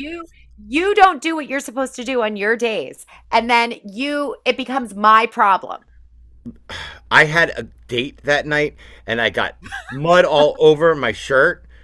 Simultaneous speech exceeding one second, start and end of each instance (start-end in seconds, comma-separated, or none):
none